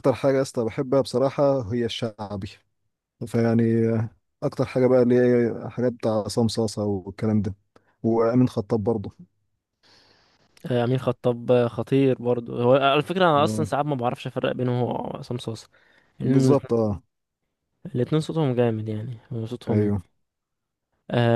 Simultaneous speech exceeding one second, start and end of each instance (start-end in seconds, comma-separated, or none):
none